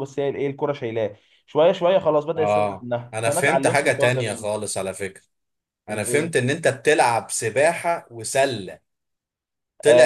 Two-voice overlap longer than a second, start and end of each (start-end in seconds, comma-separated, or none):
2.4-4.5